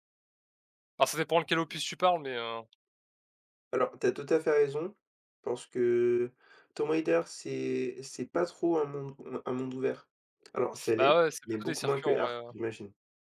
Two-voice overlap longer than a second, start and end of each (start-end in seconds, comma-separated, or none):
10.9-12.5